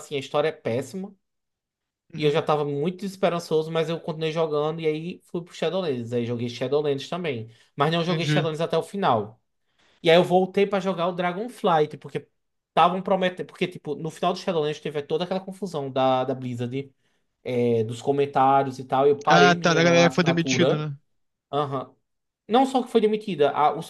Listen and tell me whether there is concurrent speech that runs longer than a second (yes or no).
yes